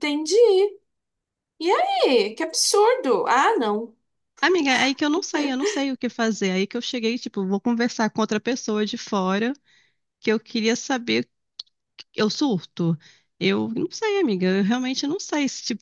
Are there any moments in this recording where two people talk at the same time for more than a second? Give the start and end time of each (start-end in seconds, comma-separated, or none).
none